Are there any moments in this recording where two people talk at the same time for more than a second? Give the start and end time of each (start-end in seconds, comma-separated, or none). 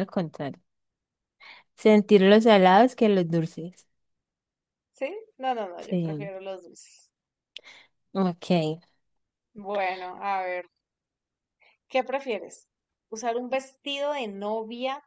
none